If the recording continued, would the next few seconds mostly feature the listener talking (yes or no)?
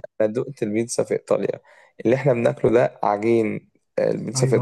yes